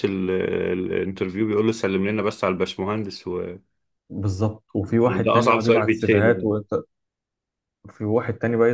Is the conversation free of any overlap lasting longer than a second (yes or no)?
no